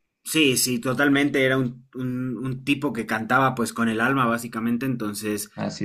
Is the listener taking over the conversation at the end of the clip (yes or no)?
no